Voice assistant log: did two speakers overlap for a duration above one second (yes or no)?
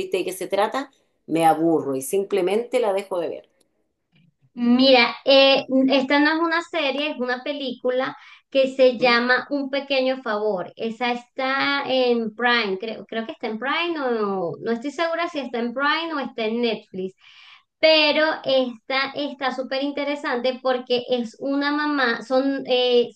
no